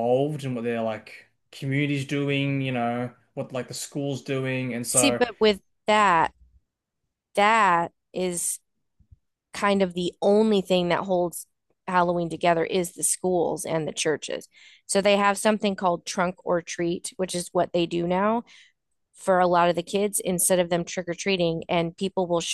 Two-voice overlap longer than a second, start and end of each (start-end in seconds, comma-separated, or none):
none